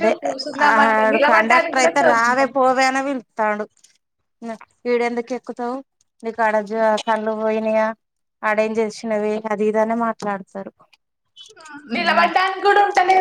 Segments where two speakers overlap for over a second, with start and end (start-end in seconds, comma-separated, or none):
0.6-2.5